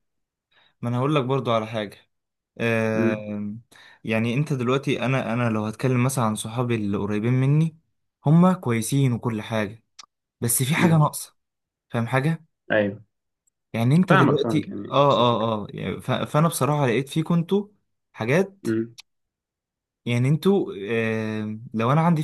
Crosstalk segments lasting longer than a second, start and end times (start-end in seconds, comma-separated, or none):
14.1-15.5